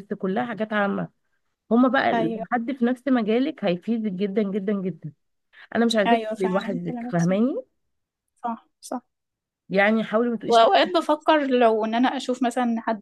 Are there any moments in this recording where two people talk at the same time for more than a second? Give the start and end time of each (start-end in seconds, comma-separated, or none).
6.0-7.3